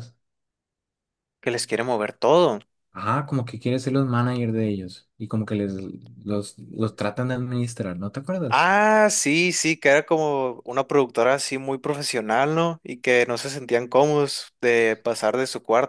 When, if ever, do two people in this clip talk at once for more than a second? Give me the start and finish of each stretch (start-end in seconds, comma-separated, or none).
none